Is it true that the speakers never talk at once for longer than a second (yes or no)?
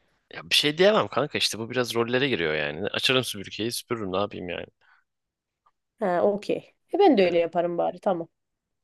yes